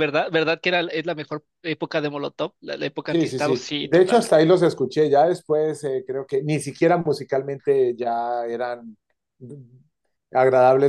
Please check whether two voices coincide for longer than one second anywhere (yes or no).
yes